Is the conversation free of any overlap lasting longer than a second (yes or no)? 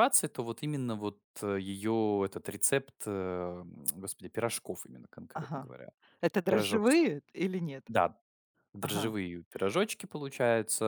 yes